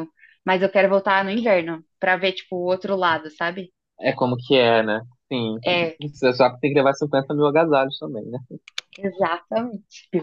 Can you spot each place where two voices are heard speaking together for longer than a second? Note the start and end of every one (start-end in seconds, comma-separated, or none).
none